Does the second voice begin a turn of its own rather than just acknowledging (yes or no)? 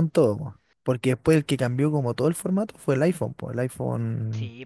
yes